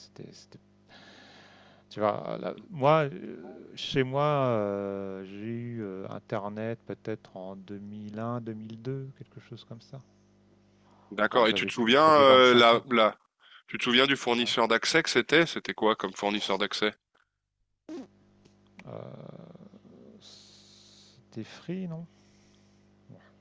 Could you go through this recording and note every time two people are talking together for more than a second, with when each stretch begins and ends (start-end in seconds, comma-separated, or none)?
11.3-13.1